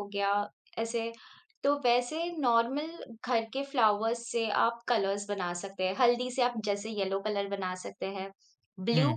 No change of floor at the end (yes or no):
yes